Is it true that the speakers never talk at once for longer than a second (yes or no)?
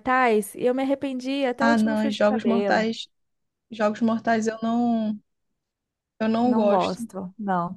no